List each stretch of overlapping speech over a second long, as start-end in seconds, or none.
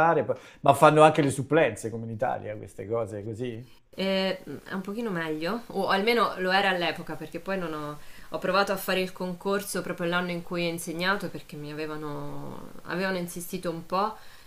none